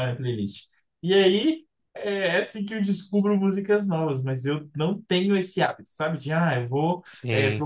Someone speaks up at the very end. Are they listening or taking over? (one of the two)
listening